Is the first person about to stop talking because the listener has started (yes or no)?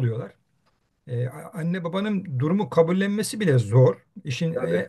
no